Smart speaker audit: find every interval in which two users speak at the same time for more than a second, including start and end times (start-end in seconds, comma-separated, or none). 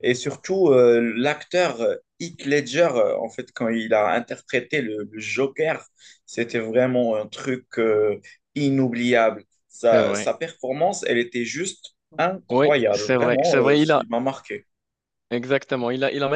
12.5-14.0